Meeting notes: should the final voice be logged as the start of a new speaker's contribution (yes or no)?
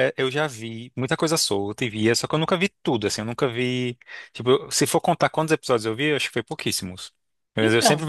no